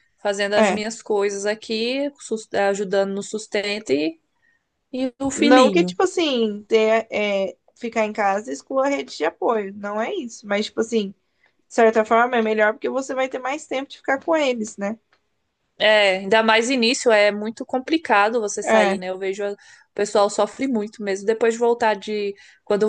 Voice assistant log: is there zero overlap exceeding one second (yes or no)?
yes